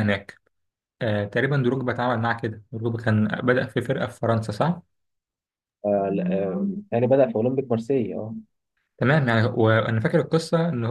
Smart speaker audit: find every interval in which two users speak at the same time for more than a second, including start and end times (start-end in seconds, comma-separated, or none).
none